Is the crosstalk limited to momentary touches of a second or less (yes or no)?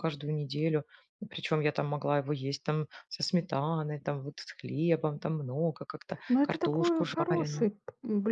no